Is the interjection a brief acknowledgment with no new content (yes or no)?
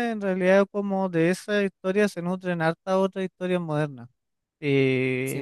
yes